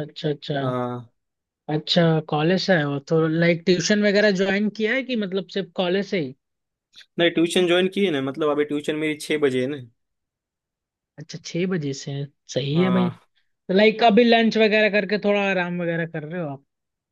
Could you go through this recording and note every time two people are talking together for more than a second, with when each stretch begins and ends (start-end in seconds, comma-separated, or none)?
none